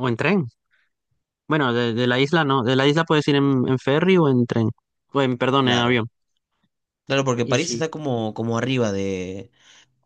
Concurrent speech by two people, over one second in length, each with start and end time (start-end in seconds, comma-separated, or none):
none